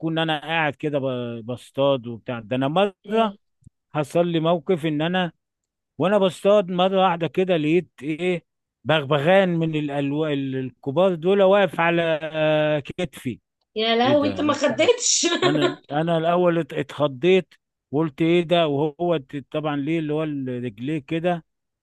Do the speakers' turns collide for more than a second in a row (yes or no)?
no